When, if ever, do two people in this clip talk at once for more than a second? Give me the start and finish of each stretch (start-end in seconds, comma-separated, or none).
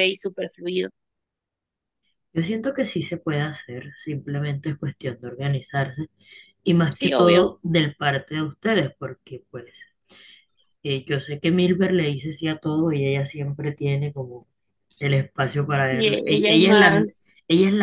15.8-17.1